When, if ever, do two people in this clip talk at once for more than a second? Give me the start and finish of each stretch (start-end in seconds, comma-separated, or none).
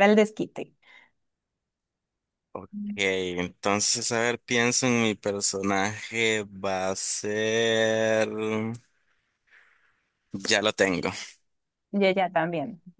none